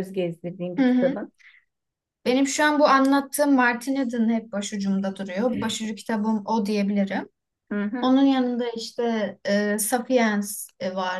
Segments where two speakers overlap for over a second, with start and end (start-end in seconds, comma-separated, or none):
none